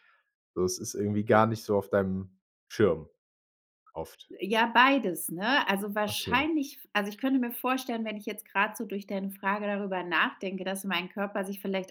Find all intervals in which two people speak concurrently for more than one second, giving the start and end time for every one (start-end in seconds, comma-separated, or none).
none